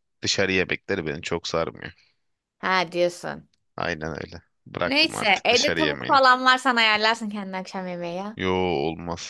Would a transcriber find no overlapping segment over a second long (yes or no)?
no